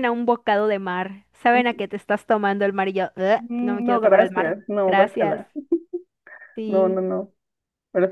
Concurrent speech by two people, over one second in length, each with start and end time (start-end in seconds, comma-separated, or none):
3.4-5.4